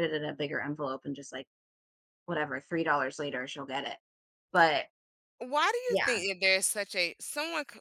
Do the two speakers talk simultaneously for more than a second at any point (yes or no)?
no